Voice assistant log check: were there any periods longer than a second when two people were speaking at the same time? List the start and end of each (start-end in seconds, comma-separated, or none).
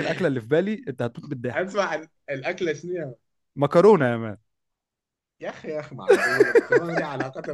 none